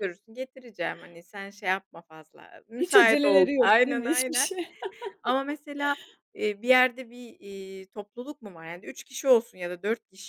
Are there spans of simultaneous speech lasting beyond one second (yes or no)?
yes